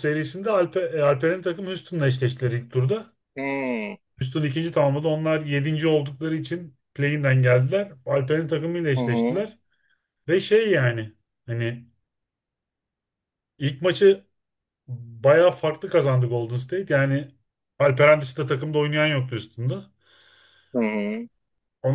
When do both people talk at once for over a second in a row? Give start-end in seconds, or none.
none